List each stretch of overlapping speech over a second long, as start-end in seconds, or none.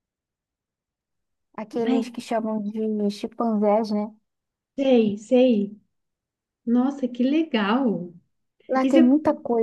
none